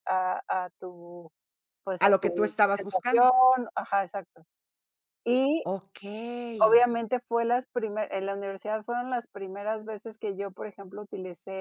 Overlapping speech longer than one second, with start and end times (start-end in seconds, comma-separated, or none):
2.0-3.3